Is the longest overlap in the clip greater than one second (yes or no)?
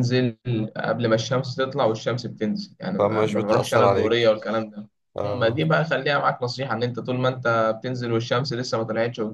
yes